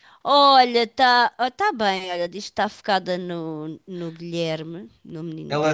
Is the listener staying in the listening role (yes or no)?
no